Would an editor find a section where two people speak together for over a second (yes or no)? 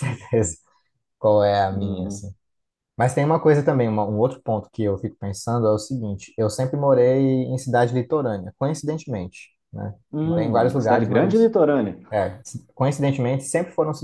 yes